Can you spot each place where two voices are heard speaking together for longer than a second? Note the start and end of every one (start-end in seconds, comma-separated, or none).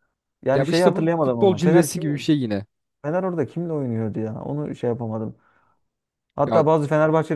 0.5-2.3